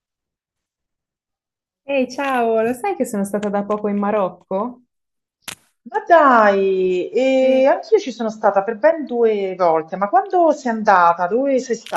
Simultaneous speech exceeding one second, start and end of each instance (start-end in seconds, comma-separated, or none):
none